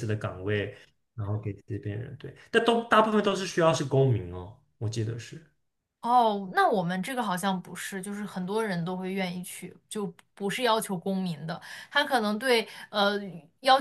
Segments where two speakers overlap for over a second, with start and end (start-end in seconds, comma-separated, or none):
none